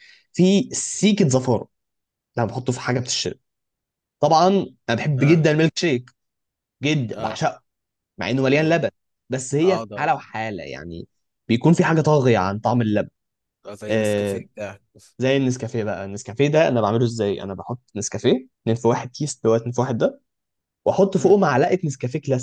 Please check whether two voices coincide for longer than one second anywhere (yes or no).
no